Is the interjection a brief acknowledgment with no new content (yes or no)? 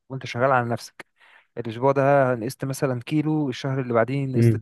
yes